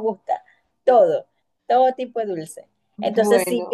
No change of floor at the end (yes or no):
yes